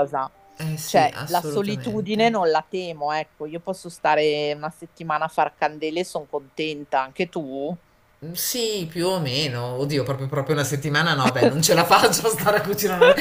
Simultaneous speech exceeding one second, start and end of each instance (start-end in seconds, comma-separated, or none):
0.8-2.4